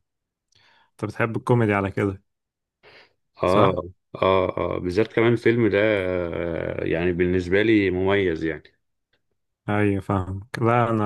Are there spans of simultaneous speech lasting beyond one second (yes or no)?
no